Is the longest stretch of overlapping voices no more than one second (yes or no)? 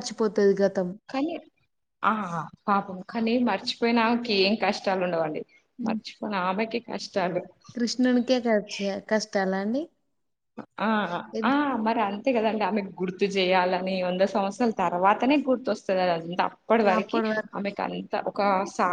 yes